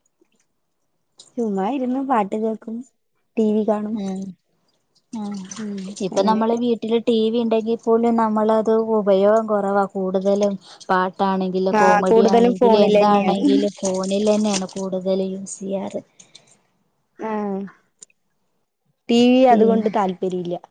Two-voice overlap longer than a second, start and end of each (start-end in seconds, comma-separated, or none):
11.8-13.4